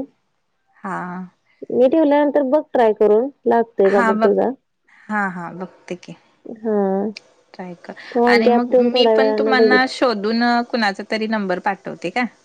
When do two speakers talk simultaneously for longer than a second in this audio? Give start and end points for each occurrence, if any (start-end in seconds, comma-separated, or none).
8.3-9.8